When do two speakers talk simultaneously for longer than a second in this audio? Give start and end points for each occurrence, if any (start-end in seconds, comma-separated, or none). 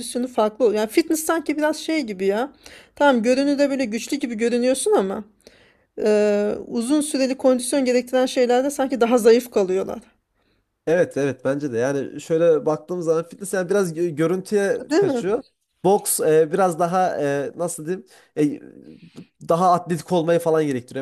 none